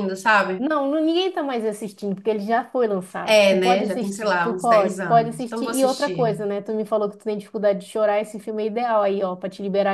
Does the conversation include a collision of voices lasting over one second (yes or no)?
yes